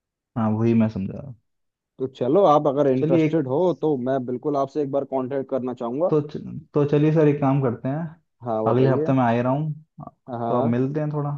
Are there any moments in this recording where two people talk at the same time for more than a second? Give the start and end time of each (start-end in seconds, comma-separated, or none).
none